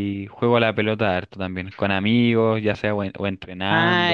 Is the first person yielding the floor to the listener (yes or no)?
yes